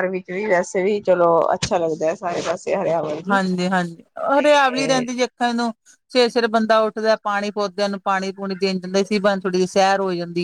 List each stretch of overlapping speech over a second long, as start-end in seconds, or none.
none